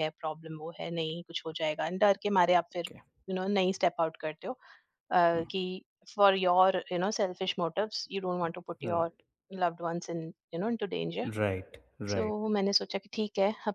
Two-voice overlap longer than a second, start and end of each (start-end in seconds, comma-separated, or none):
none